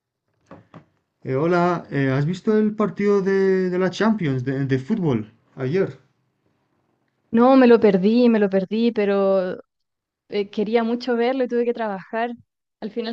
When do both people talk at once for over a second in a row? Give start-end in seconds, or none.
none